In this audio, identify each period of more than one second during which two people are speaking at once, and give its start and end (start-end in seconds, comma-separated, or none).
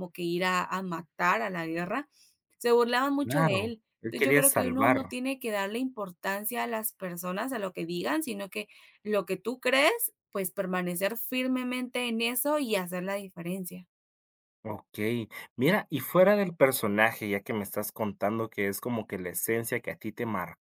3.2-5.1